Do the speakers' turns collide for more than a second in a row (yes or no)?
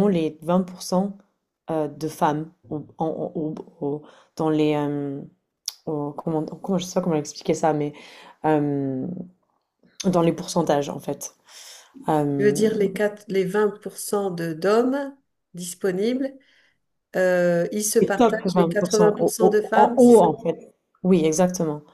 yes